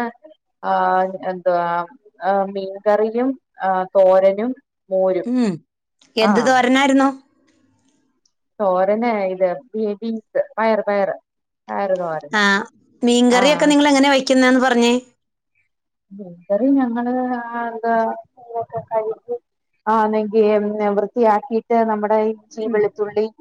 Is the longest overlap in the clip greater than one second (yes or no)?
no